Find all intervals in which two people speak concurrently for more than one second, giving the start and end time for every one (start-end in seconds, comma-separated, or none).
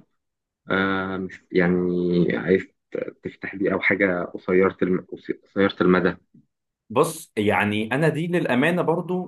none